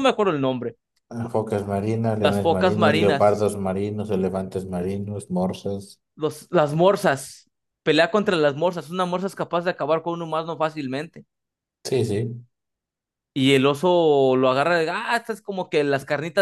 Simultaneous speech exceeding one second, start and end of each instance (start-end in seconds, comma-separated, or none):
2.2-3.4